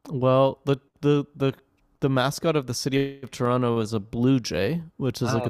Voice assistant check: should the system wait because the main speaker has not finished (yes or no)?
yes